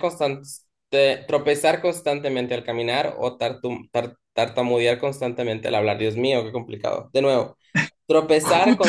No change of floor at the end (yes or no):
yes